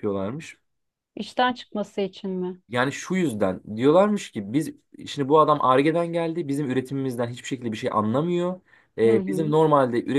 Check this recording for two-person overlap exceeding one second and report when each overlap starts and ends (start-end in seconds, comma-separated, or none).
none